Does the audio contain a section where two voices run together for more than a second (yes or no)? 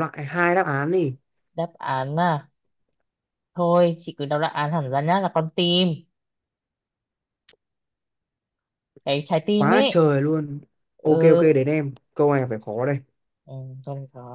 no